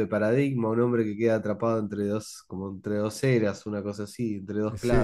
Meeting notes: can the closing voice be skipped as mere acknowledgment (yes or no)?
no